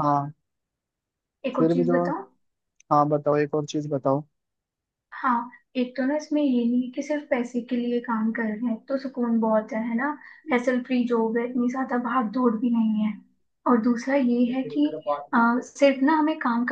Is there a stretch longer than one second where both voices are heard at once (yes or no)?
no